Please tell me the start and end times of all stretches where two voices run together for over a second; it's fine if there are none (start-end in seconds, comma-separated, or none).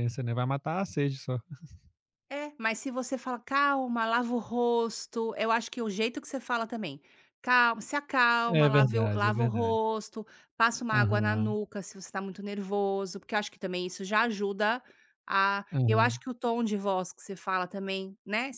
8.5-9.8